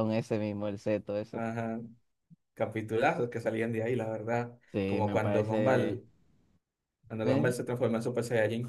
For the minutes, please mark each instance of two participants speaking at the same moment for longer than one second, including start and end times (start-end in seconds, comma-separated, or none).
4.7-6.0